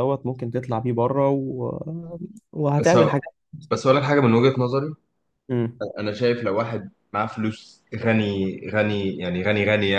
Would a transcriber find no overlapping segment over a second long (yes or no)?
yes